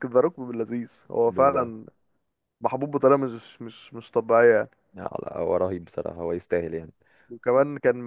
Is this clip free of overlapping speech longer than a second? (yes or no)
yes